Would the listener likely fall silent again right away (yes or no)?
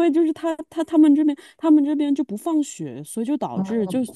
yes